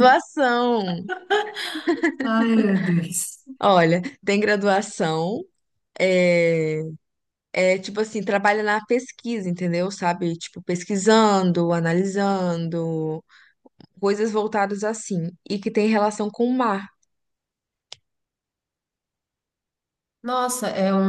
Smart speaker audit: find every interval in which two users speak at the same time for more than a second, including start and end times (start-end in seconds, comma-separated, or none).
none